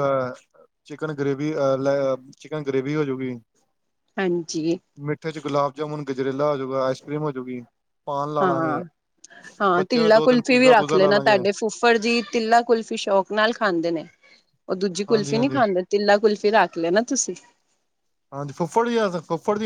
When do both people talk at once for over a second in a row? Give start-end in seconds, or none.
9.7-11.4